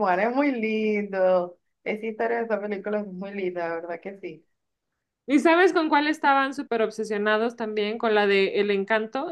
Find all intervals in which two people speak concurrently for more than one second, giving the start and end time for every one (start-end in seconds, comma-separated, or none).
none